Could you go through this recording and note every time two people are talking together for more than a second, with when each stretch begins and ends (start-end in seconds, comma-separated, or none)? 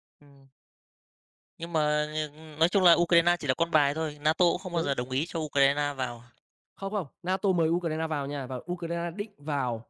none